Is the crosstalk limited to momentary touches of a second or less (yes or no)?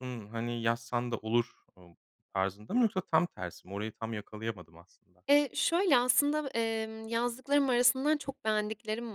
yes